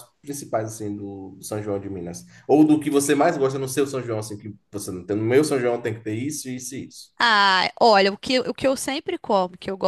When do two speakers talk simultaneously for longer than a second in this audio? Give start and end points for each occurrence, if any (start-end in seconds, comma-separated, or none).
none